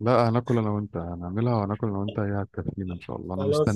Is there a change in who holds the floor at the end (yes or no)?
yes